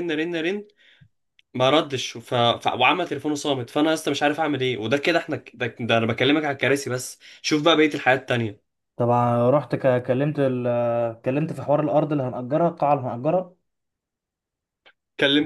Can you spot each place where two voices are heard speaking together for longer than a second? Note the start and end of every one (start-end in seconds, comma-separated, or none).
none